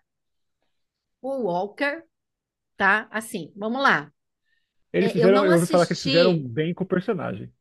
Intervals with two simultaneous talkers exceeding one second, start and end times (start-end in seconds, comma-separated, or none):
5.0-6.5